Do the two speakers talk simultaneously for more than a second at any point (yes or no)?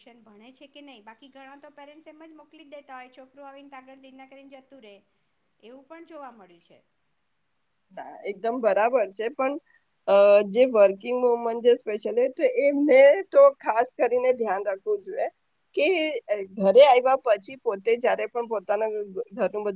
no